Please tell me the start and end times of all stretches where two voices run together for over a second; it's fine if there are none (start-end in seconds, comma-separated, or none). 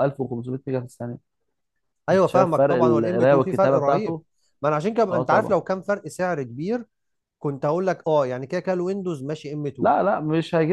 2.1-4.2